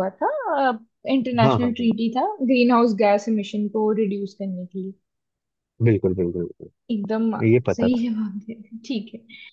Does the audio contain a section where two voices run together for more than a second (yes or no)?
no